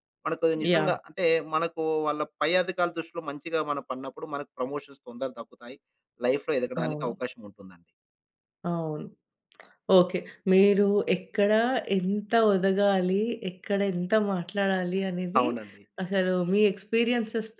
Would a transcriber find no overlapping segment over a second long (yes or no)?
yes